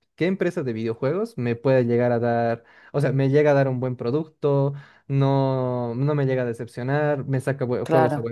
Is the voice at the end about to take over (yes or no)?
no